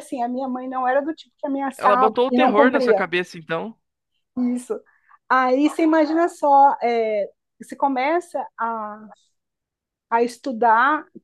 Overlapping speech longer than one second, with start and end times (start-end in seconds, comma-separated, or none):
1.8-3.0